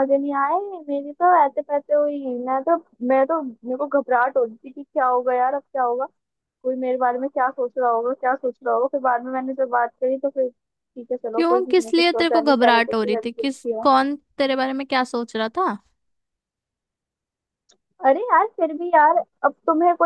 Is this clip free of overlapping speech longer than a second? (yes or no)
no